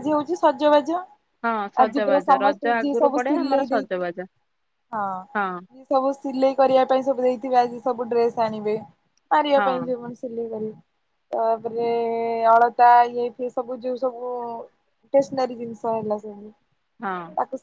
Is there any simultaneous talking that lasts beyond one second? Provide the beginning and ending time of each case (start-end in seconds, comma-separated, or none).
1.9-4.0